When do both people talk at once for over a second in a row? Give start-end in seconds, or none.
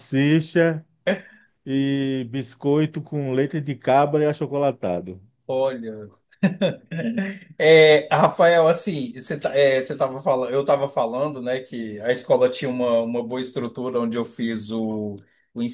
none